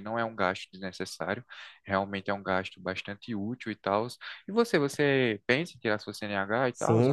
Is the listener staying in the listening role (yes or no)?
no